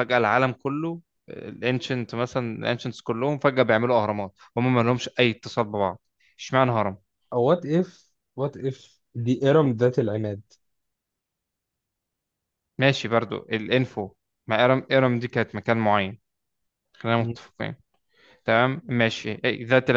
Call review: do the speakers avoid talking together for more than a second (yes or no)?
yes